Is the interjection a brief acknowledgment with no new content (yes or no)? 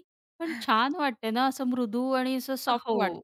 no